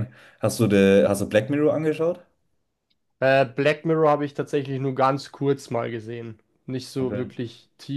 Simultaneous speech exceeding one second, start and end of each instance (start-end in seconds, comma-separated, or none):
none